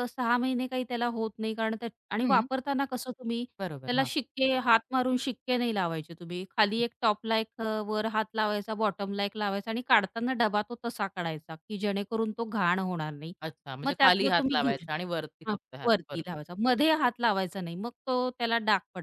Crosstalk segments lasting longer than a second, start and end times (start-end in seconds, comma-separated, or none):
13.8-16.3